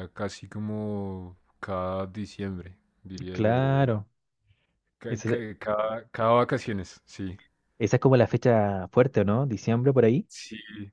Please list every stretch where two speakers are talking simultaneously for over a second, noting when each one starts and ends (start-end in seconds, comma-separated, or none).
none